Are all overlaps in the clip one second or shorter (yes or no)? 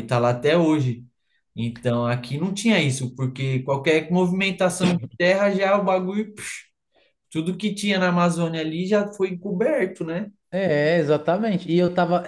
yes